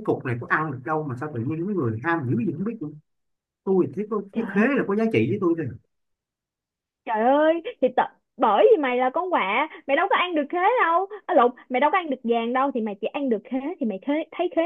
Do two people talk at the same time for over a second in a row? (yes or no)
no